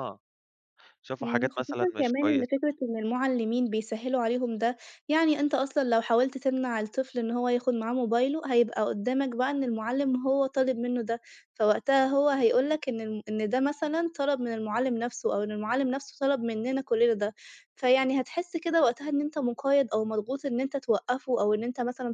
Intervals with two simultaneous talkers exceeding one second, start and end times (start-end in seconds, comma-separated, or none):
1.2-2.6